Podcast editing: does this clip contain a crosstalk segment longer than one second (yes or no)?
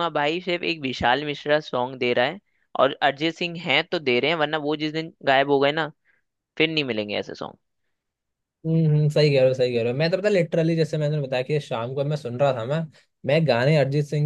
no